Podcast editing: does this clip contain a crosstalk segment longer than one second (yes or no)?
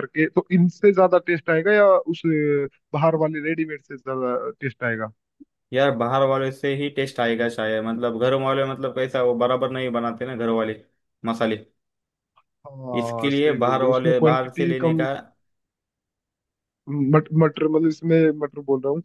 yes